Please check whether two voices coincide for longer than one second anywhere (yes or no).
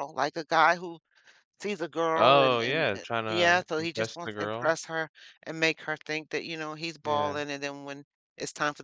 yes